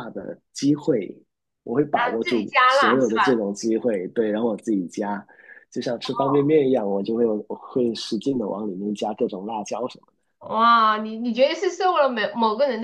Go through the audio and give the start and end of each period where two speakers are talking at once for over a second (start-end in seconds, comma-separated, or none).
1.9-3.4